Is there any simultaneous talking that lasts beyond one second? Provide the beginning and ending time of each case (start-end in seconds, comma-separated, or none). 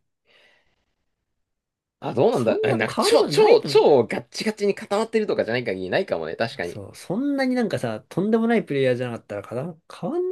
2.3-3.9